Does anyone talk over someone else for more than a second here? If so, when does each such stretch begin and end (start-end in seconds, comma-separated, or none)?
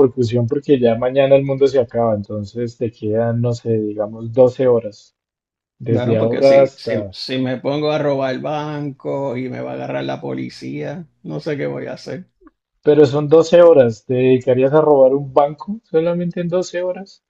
5.9-7.2